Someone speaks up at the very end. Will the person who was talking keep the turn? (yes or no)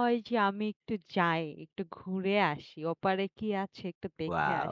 yes